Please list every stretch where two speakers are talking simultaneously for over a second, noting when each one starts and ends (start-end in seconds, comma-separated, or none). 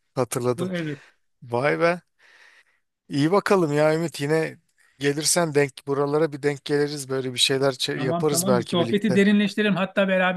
8.0-9.2